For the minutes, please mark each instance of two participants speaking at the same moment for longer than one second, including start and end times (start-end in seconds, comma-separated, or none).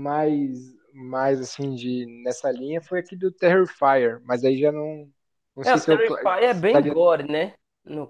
5.6-7.0